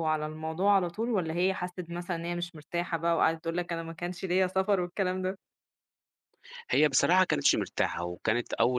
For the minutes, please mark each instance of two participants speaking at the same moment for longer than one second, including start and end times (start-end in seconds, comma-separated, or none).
none